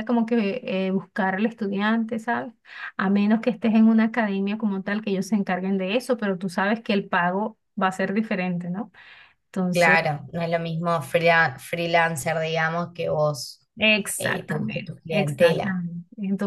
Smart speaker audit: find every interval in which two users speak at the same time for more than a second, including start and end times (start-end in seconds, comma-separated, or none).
14.2-15.8